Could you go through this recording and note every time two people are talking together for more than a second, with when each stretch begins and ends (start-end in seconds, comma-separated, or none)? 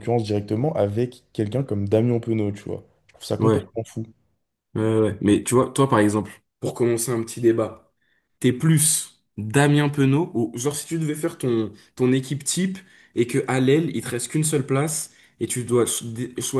none